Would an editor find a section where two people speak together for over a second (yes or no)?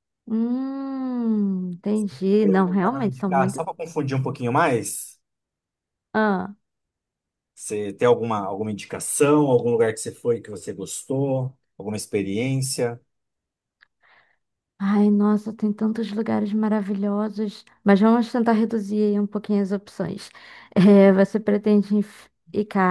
yes